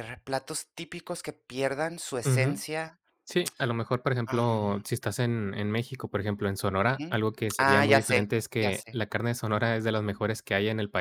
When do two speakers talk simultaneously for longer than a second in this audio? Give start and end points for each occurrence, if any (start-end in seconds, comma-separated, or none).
6.8-9.0